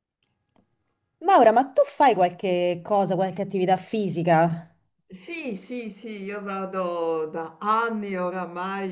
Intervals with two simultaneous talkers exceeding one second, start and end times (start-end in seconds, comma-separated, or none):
none